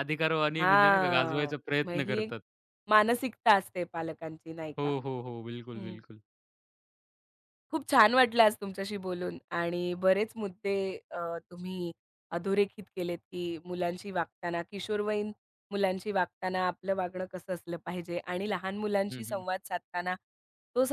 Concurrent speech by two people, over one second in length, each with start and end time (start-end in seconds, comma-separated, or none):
0.6-2.3